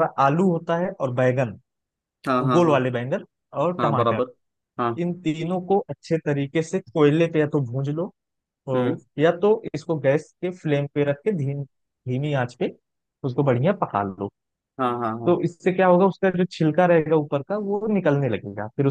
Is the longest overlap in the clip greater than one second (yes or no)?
no